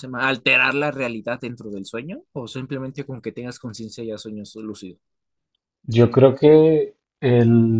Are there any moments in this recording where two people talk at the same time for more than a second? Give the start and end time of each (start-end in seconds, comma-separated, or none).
none